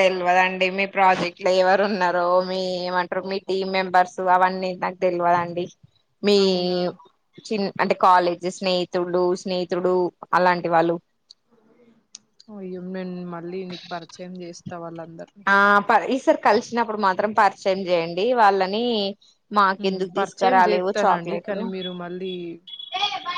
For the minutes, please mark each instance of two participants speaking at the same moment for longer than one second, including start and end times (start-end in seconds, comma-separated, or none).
20.2-21.6